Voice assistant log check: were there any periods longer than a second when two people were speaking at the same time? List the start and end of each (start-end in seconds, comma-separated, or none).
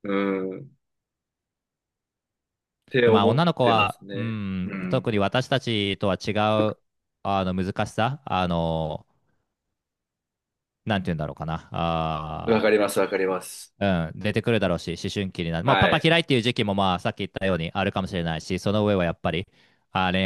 3.0-5.1